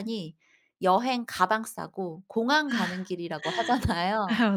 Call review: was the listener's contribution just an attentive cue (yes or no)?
yes